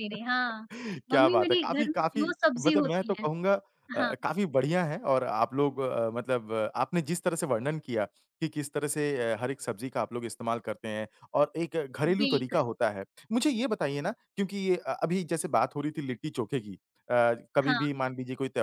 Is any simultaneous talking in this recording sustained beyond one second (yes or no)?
yes